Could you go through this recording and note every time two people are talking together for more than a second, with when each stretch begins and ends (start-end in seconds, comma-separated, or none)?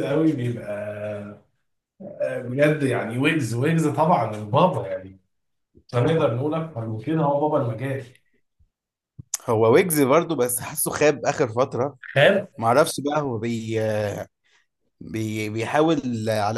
none